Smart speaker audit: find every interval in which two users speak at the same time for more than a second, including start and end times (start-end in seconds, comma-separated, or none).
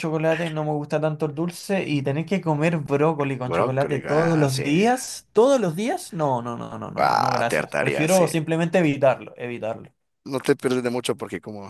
3.4-4.6, 7.0-8.3